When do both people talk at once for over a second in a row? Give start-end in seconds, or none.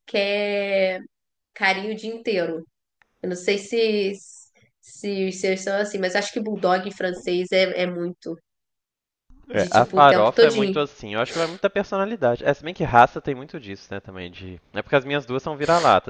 9.5-10.8